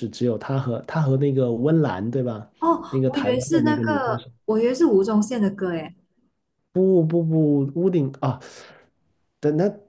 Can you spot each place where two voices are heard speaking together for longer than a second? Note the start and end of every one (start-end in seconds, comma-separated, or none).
2.9-4.3